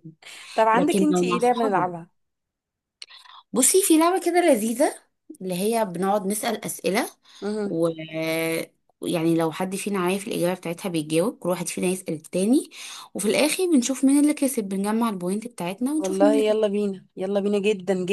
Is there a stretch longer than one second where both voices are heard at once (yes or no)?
yes